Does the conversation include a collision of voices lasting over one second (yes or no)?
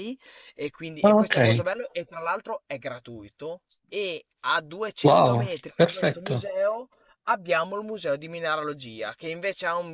yes